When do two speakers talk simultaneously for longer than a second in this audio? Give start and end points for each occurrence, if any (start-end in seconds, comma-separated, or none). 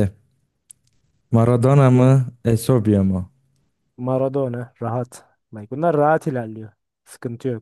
none